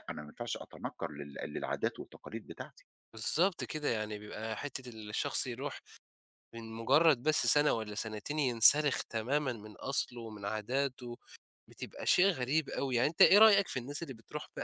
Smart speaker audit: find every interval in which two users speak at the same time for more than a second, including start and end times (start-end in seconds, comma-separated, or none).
none